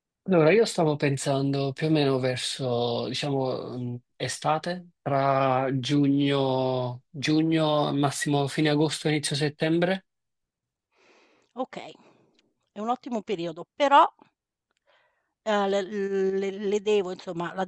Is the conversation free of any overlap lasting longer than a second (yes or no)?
yes